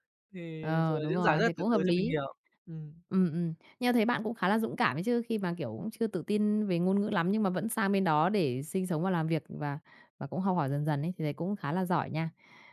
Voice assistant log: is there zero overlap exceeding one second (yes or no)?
no